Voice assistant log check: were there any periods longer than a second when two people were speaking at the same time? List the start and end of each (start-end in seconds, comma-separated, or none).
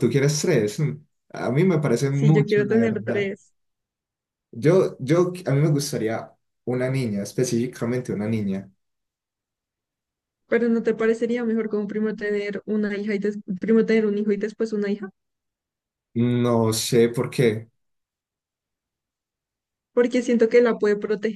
2.1-3.3